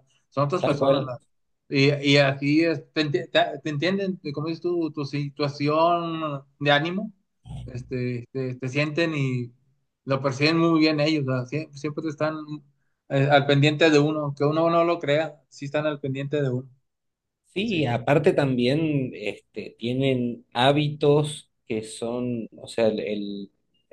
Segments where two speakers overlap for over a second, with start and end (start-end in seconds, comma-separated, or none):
none